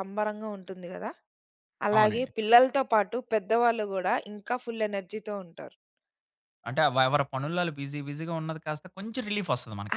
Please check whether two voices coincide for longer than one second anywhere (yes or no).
no